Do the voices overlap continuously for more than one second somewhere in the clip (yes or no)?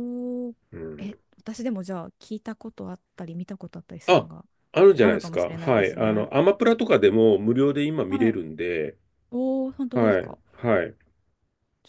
yes